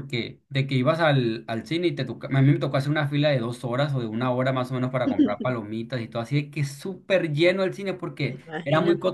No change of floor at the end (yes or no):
yes